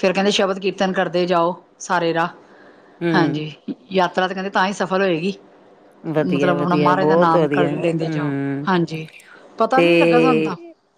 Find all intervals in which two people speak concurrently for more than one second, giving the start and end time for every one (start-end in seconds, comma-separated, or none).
6.2-8.7